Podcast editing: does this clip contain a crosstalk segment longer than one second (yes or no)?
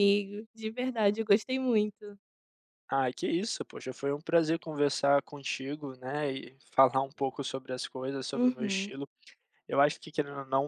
no